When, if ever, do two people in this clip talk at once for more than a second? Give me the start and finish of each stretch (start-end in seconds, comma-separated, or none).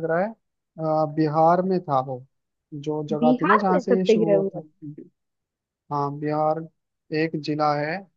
3.2-4.6